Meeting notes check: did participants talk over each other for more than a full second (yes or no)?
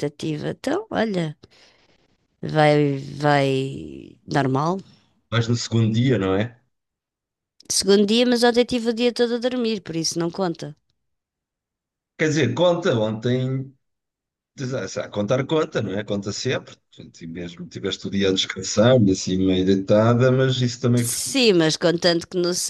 no